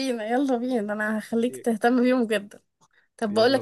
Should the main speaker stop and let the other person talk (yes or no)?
no